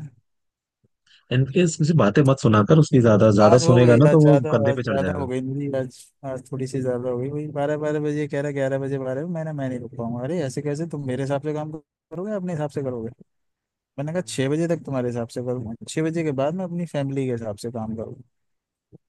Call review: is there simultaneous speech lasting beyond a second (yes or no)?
yes